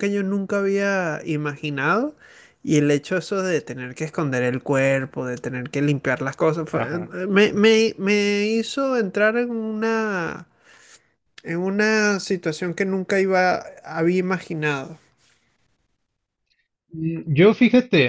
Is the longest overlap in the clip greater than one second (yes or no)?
no